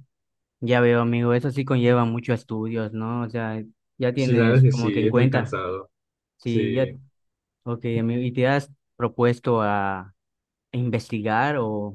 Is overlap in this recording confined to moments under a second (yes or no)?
no